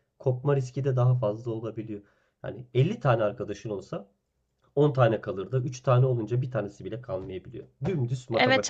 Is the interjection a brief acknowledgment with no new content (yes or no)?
no